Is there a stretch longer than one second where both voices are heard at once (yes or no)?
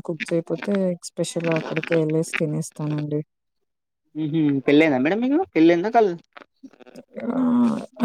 no